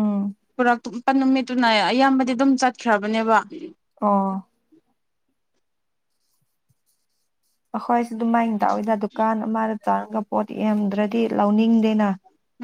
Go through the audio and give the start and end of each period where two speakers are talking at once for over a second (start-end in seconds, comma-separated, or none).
none